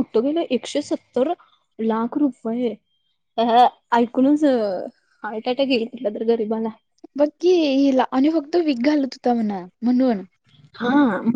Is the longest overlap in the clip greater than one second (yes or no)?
no